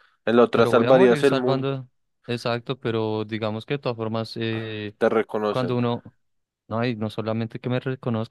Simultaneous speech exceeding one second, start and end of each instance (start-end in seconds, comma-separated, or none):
0.5-1.7